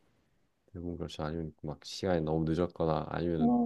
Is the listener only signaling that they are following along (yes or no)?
yes